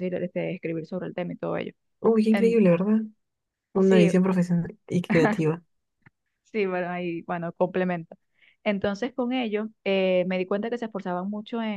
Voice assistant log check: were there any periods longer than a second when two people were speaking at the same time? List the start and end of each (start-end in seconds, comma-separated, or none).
none